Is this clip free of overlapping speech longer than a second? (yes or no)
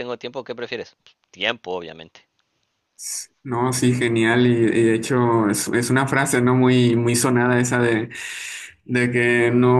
yes